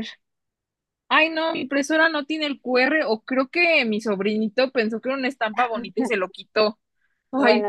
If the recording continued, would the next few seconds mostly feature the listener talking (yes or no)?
no